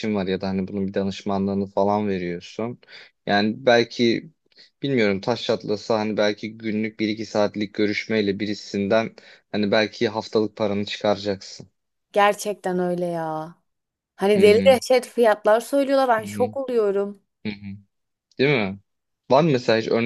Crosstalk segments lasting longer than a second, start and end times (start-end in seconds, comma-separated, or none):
none